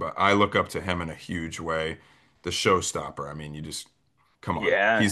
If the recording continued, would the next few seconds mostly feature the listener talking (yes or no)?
no